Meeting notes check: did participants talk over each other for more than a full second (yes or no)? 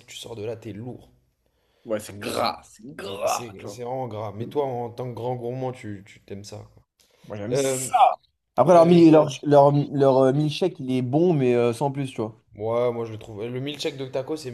no